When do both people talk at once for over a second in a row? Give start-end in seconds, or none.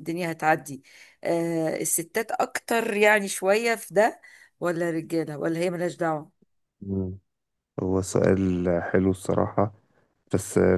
none